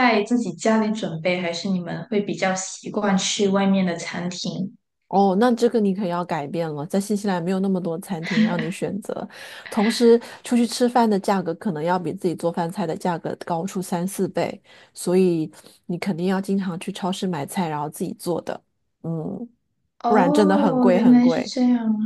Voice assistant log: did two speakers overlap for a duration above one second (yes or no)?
yes